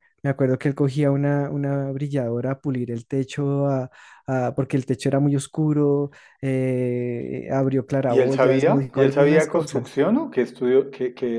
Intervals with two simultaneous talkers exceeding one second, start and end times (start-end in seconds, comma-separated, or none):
8.1-10.0